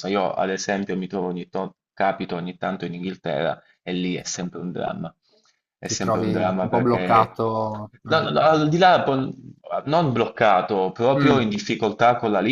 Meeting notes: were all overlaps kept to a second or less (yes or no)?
no